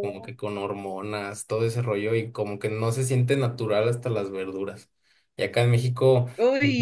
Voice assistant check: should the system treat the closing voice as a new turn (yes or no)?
no